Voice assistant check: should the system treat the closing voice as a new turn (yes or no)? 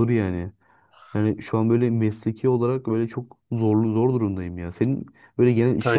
no